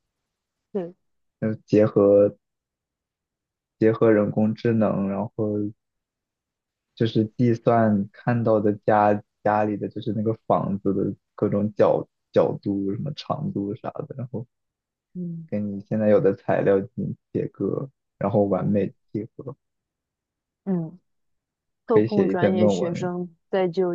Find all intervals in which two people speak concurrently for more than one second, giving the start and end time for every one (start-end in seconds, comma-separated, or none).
21.9-23.1